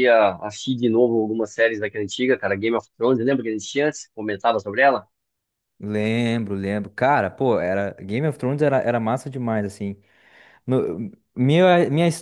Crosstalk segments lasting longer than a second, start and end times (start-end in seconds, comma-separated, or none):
none